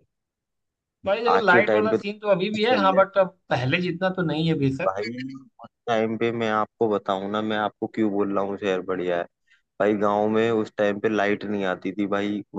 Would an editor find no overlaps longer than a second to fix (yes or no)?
no